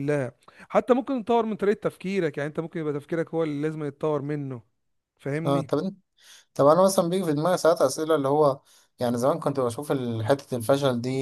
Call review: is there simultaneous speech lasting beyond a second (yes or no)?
no